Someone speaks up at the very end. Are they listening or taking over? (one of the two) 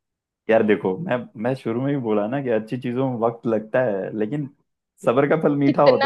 taking over